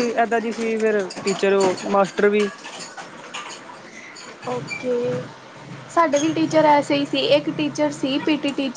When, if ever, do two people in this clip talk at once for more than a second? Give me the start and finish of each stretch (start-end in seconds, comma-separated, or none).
none